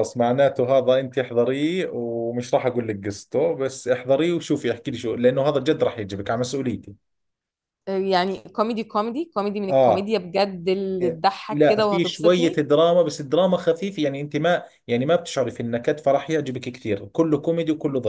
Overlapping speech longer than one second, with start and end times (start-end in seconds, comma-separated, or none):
11.0-12.7